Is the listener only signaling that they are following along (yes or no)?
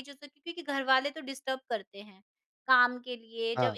yes